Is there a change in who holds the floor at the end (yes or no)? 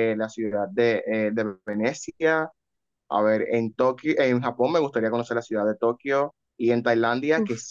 no